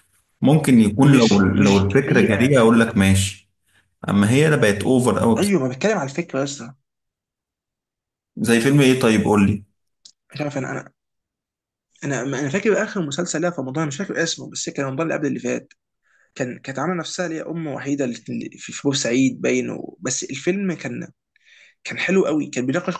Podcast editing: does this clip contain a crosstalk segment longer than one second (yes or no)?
yes